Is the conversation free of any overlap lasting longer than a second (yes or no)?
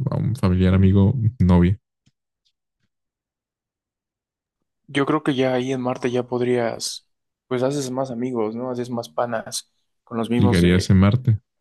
yes